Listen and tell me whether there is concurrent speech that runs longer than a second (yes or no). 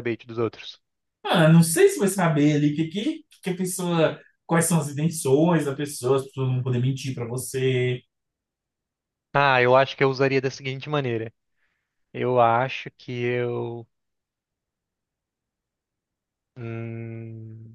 no